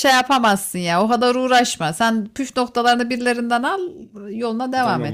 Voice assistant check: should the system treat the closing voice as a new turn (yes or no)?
yes